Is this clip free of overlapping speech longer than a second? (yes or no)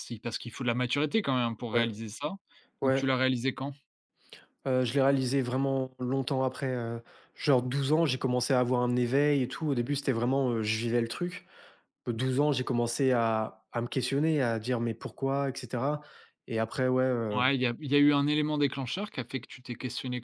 yes